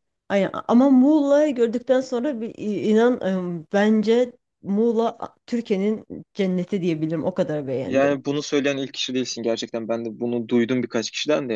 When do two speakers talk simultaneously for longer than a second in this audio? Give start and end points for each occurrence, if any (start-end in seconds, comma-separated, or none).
none